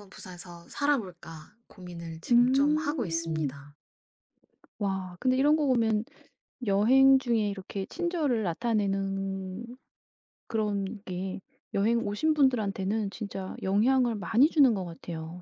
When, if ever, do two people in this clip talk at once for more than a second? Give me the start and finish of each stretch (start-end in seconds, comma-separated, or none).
2.3-3.5